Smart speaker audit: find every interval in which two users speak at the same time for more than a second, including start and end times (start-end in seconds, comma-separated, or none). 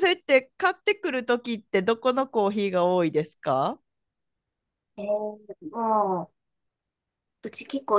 none